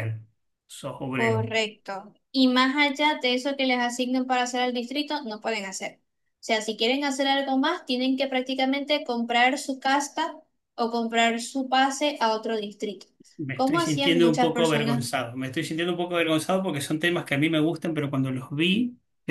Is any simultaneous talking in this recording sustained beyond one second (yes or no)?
yes